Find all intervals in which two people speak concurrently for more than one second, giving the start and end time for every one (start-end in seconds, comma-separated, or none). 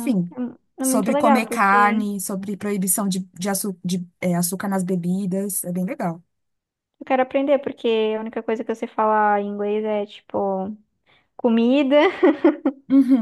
0.8-2.1